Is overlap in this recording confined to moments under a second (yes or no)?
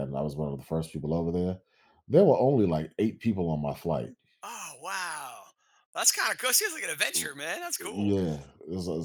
yes